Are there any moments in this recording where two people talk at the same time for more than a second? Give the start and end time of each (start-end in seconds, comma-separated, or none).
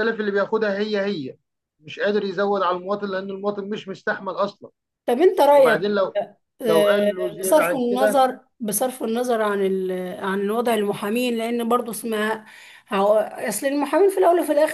6.7-8.2